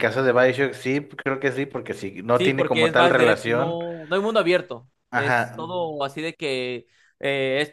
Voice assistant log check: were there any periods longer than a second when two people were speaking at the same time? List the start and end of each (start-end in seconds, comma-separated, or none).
2.3-3.8